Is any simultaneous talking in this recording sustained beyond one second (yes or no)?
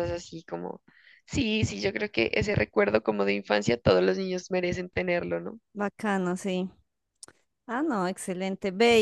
no